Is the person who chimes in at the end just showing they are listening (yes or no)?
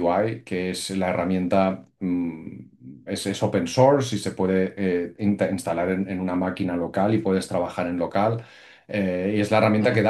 yes